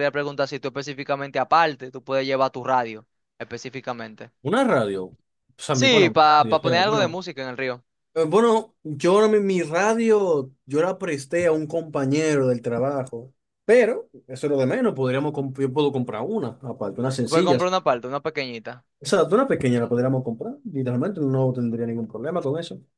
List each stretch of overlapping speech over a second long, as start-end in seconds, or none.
5.7-7.2